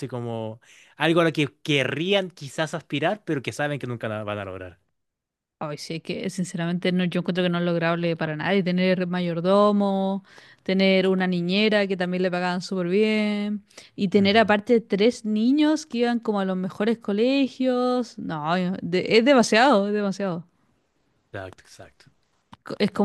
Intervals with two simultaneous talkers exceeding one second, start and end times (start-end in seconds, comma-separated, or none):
none